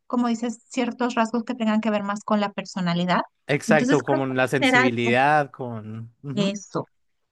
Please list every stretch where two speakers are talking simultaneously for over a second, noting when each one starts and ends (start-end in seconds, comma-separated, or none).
3.7-5.1